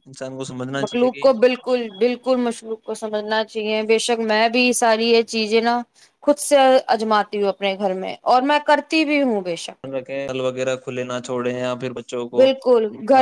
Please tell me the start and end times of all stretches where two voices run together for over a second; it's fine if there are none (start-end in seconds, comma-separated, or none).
none